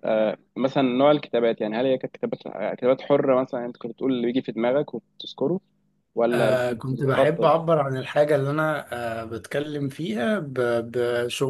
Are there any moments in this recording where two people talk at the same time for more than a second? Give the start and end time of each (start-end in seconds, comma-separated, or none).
6.3-7.5